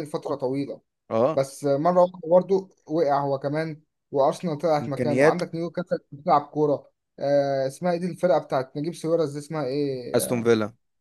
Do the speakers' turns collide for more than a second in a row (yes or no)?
no